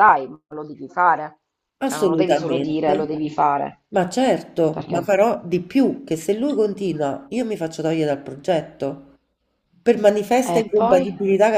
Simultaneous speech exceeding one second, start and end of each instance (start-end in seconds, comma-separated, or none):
1.8-3.1